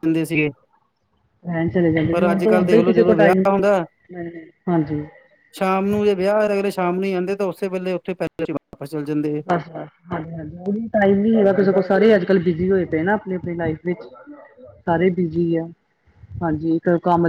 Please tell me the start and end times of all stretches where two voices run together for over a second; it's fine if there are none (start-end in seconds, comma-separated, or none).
2.1-3.5